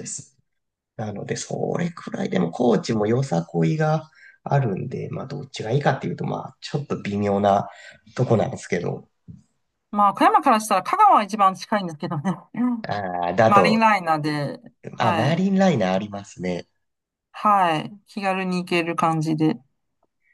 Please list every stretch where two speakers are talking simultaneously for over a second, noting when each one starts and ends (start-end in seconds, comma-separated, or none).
none